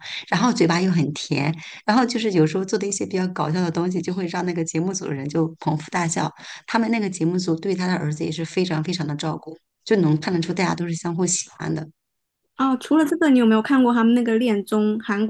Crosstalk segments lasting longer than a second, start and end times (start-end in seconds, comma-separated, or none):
none